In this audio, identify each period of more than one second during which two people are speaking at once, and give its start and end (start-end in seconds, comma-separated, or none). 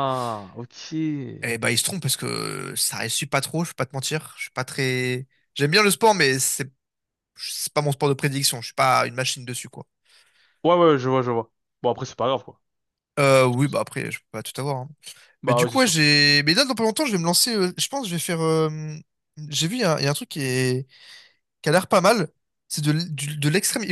none